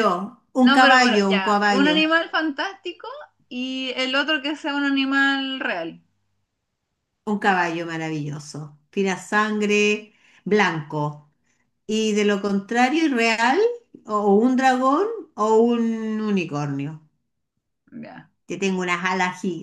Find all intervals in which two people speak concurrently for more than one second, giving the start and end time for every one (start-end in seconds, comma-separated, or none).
0.6-2.0